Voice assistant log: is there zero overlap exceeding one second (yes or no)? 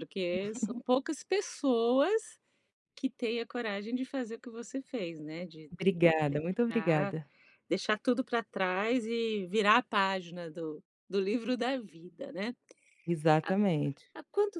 yes